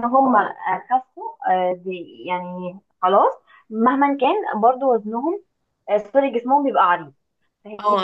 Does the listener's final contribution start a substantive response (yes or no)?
yes